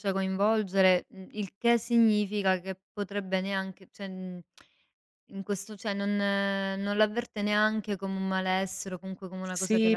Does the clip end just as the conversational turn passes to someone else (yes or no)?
yes